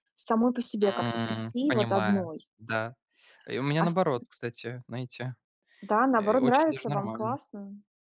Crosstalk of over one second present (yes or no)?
yes